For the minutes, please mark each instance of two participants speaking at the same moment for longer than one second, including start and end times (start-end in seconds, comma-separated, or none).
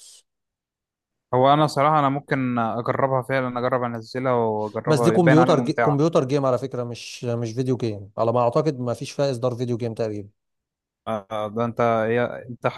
4.8-6.0